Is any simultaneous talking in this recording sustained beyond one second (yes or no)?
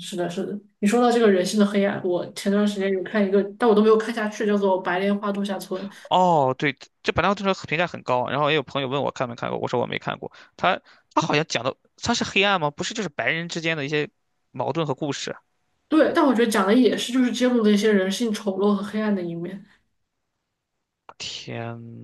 no